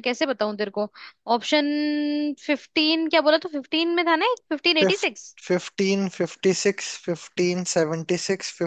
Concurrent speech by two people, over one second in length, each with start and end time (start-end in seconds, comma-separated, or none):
none